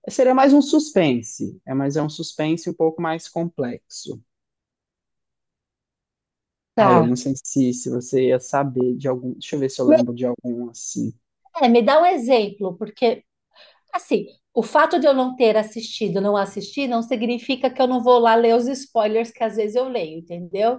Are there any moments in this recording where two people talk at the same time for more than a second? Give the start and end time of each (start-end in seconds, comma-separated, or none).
none